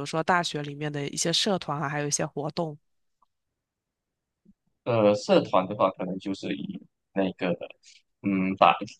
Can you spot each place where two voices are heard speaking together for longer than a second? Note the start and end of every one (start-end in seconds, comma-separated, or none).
none